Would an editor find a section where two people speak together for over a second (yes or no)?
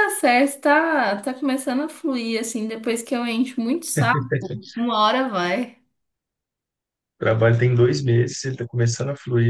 no